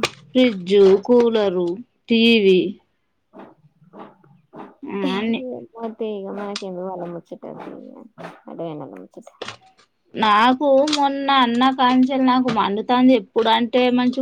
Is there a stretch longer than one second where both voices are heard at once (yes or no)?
no